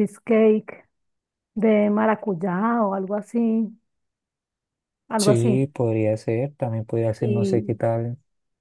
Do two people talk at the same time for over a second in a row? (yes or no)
no